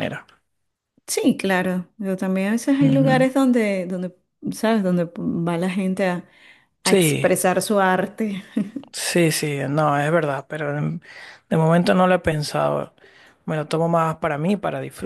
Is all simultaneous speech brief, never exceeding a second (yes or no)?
yes